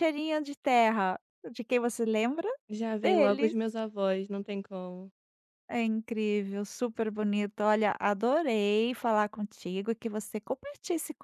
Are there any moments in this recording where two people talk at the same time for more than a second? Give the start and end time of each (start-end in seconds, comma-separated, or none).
none